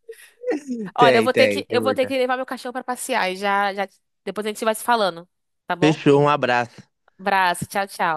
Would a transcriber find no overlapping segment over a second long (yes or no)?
no